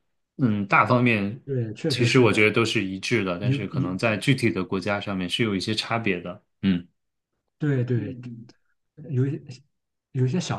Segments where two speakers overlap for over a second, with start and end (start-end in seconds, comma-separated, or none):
none